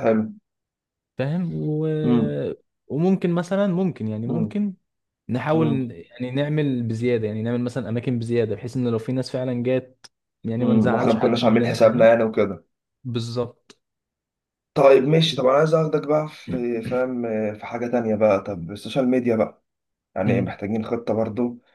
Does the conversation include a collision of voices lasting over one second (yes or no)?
yes